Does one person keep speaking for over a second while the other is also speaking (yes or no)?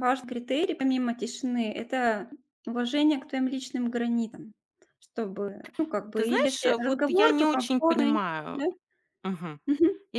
yes